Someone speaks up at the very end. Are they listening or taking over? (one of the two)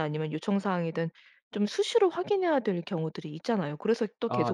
listening